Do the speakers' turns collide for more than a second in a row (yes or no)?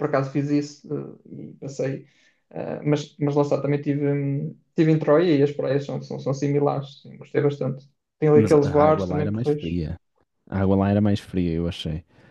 yes